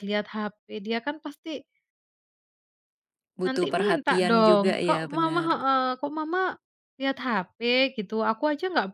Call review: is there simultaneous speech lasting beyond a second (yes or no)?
yes